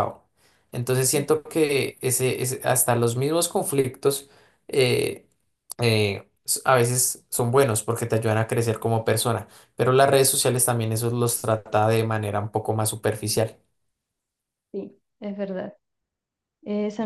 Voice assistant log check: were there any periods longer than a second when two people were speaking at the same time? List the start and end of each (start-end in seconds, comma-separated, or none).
none